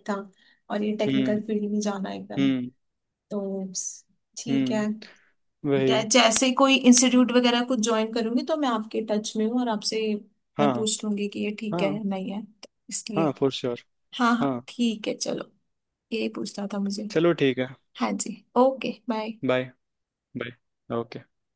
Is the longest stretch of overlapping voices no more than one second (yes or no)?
yes